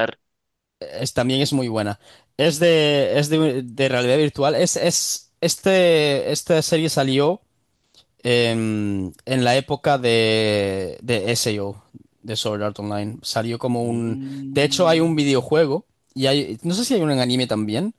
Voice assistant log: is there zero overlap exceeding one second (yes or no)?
no